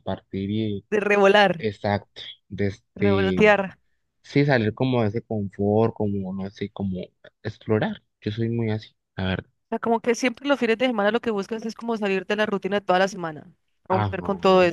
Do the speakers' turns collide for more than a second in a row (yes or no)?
no